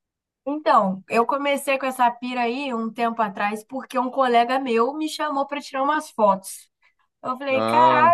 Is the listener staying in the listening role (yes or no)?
yes